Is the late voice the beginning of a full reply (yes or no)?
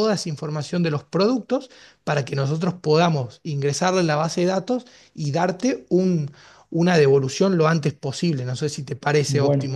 yes